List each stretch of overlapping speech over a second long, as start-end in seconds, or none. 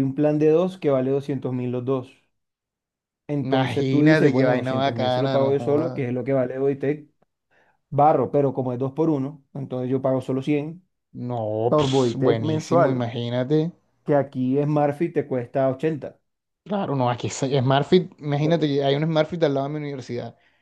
3.4-6.1, 11.7-13.1